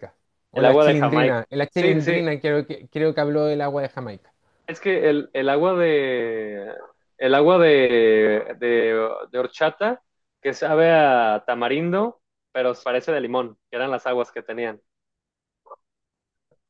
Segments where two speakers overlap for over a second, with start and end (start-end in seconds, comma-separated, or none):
0.5-2.2